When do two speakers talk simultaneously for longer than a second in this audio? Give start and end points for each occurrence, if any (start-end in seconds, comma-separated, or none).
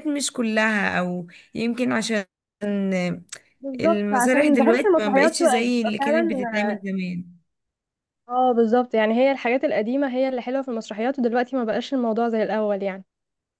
3.8-6.3